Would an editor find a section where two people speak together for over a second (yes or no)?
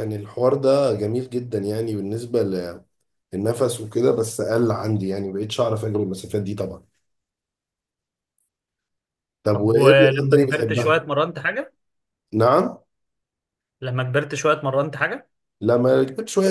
yes